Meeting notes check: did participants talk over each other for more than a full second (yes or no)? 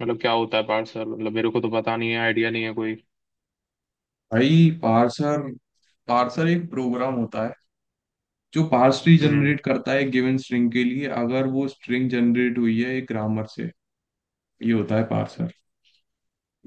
no